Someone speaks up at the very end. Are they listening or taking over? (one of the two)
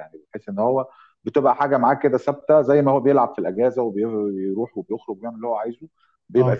listening